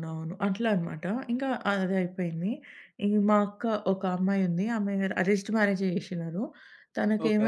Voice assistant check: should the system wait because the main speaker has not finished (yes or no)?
yes